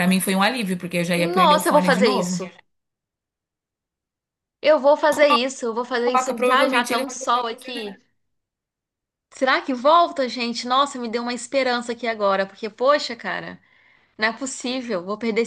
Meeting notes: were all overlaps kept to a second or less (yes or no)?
no